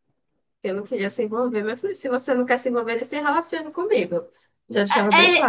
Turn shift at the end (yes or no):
yes